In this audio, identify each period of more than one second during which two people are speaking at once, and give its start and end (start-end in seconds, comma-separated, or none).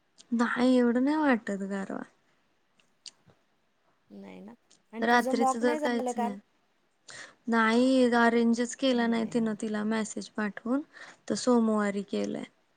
5.0-6.3